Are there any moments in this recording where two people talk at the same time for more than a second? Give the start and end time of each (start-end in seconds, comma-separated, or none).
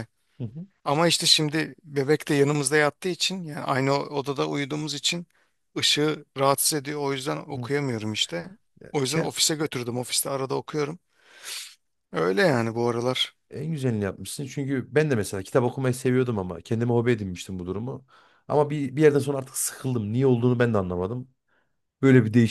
none